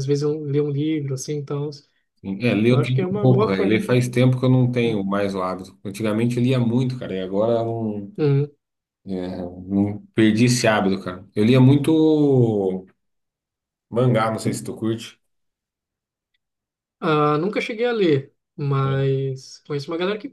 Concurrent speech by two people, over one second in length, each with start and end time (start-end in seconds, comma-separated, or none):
2.7-4.0